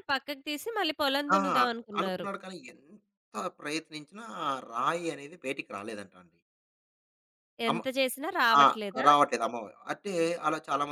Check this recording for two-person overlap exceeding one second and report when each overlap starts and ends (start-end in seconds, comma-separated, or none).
none